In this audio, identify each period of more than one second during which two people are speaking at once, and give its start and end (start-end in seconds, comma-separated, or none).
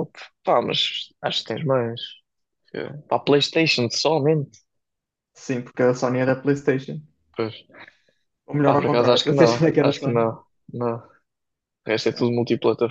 8.6-10.2